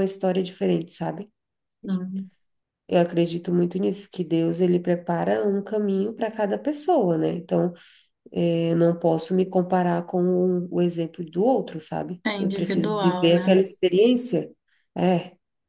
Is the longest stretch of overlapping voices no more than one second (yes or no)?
no